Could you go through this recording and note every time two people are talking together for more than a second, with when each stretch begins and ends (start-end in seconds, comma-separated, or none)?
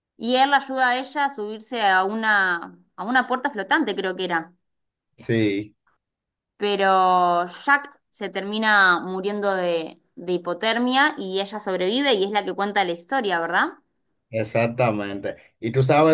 none